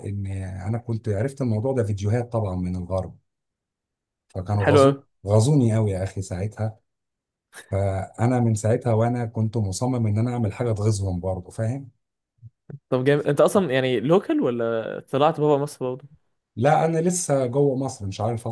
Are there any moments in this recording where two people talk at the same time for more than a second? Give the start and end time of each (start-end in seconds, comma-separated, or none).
none